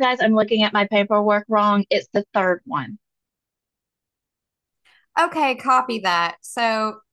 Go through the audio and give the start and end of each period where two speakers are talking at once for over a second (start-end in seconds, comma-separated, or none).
none